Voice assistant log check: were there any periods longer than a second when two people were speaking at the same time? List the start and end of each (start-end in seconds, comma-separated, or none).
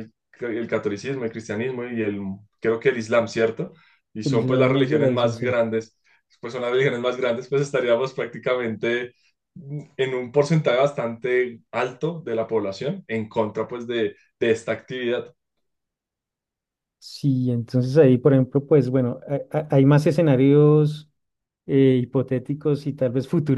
4.2-5.5